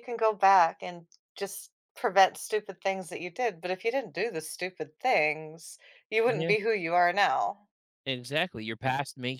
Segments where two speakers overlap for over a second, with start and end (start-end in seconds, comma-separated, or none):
none